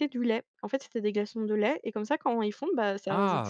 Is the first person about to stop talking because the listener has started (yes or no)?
yes